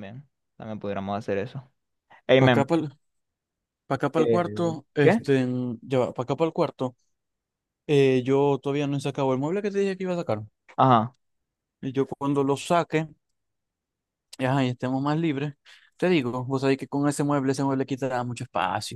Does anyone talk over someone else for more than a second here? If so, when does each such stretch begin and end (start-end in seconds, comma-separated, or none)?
none